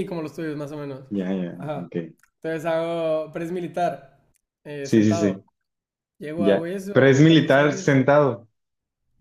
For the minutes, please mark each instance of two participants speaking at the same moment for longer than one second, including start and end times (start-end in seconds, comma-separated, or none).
6.3-8.0